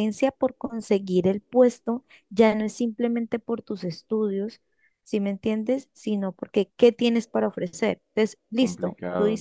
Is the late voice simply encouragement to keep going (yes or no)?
no